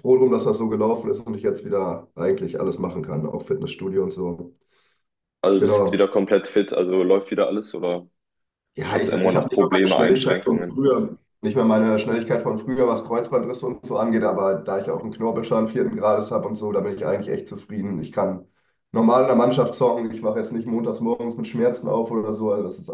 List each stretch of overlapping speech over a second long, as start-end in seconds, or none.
8.9-10.9